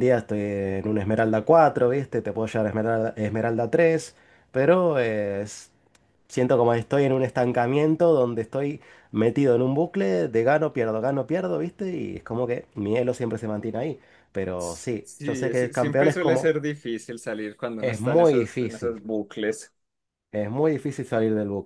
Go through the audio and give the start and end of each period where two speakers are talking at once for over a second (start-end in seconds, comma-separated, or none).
14.6-16.5, 17.8-19.0